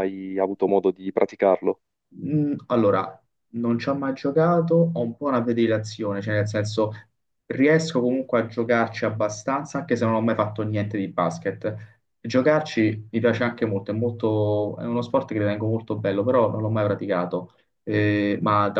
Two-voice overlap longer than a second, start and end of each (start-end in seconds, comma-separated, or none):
none